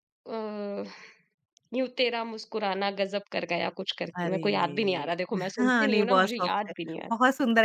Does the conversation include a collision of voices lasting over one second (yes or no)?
yes